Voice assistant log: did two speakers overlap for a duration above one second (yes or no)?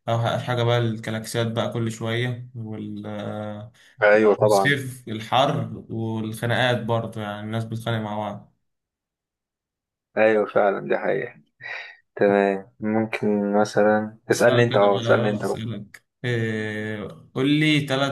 yes